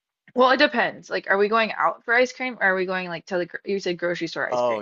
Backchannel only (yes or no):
no